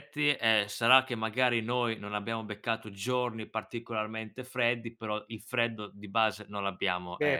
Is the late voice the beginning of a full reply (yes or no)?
yes